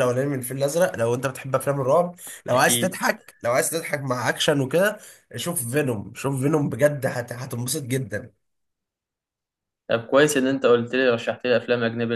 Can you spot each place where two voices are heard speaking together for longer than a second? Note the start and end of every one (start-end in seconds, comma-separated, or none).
none